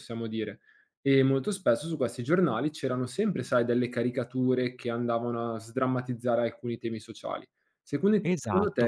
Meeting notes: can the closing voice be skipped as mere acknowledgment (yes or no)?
no